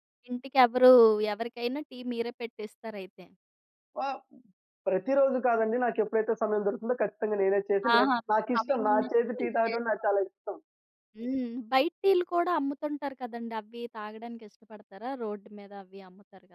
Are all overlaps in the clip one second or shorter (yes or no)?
no